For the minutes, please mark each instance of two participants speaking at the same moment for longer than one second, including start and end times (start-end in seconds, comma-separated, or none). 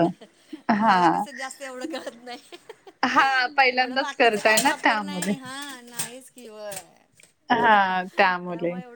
3.7-5.3